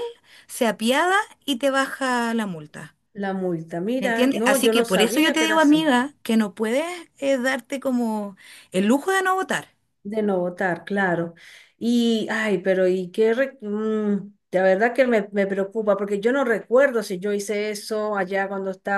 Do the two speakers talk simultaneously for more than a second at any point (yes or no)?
yes